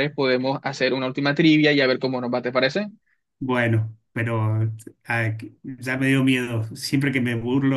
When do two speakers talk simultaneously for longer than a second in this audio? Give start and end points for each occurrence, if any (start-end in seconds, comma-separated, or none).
none